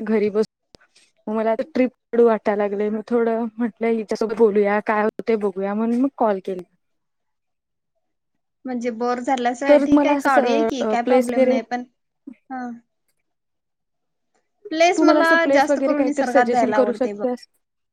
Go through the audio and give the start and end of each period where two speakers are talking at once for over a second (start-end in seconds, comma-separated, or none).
9.7-11.5, 15.0-17.2